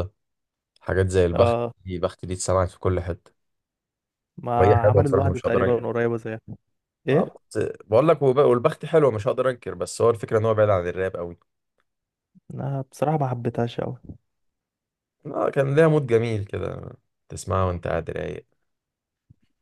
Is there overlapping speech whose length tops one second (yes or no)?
yes